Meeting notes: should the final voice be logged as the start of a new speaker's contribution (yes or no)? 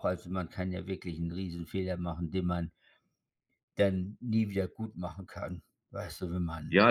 yes